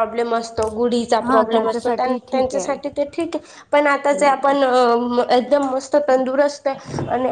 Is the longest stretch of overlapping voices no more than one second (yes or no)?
no